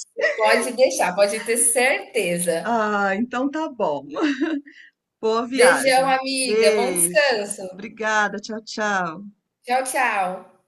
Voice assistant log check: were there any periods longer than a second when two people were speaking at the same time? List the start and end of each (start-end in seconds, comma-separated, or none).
5.5-7.6